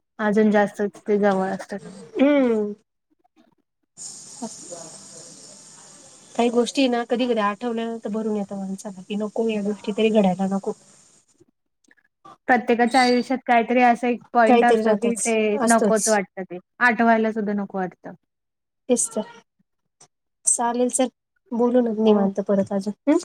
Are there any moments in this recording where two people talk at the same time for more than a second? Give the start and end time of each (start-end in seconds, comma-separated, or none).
14.5-16.2